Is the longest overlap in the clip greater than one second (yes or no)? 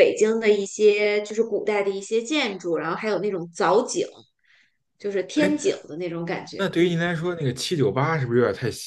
no